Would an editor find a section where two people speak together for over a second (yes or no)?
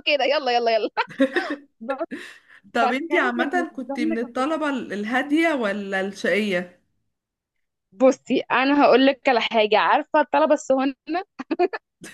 yes